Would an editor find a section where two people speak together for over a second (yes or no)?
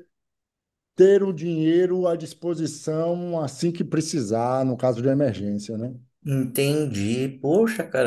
no